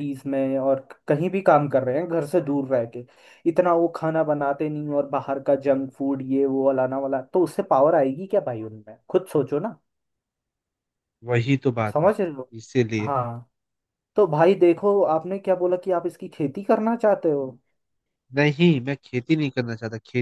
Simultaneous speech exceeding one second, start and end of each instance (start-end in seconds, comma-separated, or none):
none